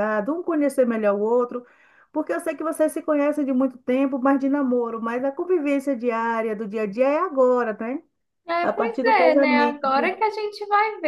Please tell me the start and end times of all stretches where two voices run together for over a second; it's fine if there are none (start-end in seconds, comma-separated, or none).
8.6-10.1